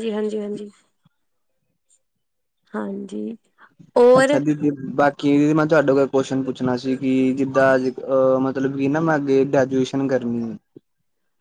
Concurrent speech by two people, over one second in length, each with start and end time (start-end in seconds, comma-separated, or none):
none